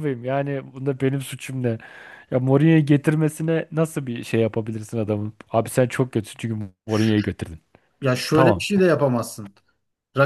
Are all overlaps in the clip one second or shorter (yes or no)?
yes